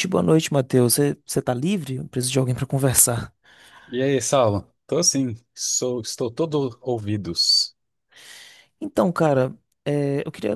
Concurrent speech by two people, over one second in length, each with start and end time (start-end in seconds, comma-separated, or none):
none